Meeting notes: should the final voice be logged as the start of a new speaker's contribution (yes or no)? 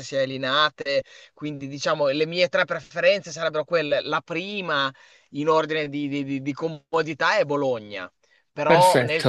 no